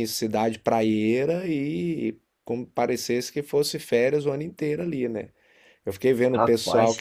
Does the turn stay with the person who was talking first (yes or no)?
yes